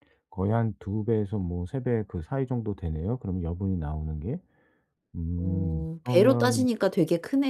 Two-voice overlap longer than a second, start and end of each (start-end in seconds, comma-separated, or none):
5.4-6.7